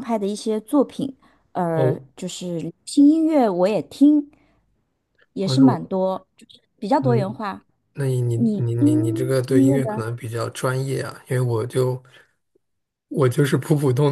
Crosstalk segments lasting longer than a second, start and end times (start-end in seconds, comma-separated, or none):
8.3-10.0